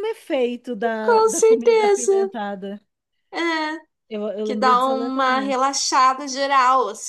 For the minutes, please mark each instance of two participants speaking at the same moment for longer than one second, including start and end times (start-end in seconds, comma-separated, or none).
1.0-2.3, 4.4-5.6